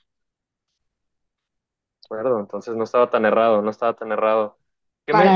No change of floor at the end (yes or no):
yes